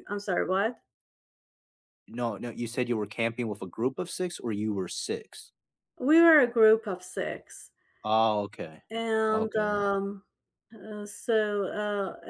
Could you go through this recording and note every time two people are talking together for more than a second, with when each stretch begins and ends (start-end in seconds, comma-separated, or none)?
none